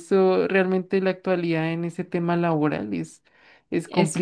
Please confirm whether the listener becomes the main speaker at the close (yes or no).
yes